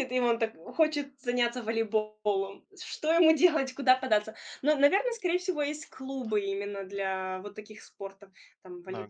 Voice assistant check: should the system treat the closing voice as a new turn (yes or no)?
no